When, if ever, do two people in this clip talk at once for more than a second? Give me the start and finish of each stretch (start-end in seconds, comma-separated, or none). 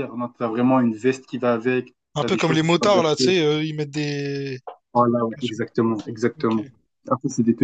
2.1-3.3